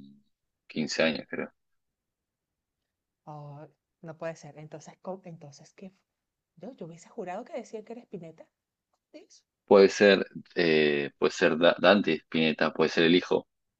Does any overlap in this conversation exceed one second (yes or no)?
no